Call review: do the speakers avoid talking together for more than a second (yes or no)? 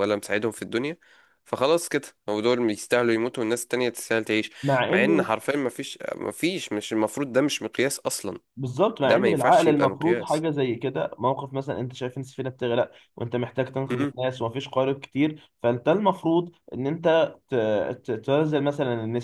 no